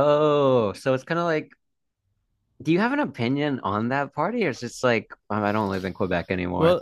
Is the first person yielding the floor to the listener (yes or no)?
yes